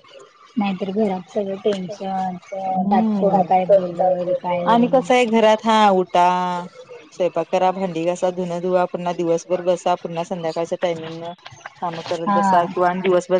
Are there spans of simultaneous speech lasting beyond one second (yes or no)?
no